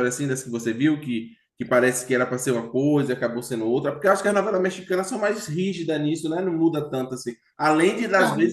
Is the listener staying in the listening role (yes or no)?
yes